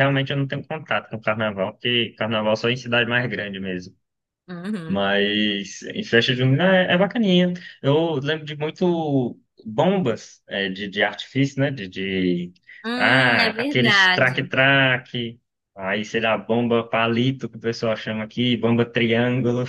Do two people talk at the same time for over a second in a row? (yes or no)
yes